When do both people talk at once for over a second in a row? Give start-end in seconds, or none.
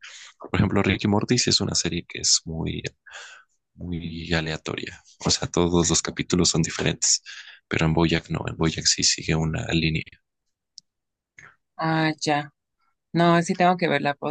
none